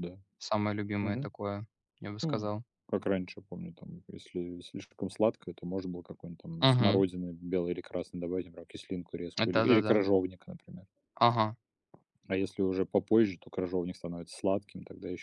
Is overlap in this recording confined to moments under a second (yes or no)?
yes